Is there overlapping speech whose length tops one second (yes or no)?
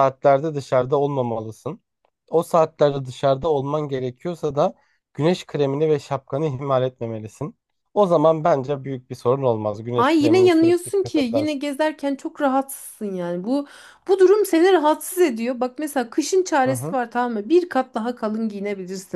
yes